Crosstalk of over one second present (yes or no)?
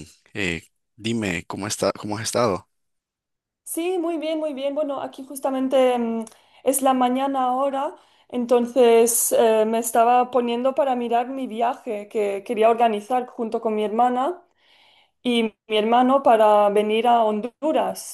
no